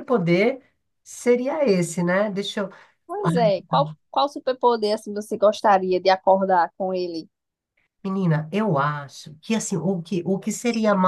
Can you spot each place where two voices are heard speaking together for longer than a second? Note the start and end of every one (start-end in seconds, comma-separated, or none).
none